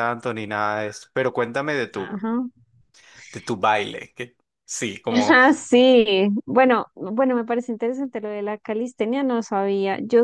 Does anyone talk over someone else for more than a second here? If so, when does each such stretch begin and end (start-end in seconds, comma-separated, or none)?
none